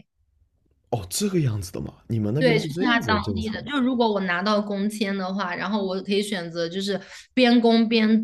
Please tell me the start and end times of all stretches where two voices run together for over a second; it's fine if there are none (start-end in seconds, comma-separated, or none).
2.4-3.6